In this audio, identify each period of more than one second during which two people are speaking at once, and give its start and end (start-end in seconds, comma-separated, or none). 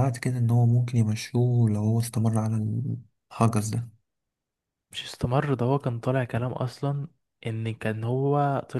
none